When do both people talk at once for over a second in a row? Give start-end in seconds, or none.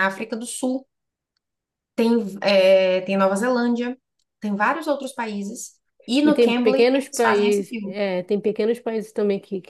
6.2-8.0